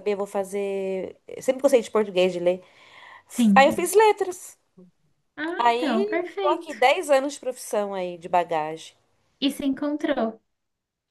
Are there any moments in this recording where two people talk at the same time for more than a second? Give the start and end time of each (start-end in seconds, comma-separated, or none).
5.6-6.8